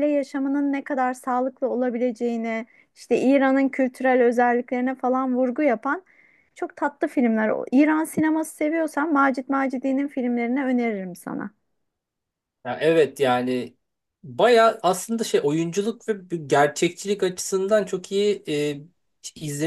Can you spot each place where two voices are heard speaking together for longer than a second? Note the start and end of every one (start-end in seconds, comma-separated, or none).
none